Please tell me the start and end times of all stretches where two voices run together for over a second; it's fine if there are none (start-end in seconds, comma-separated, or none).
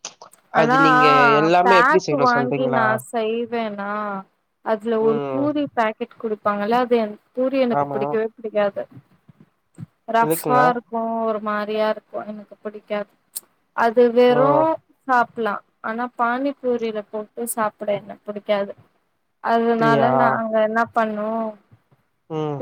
0.6-2.8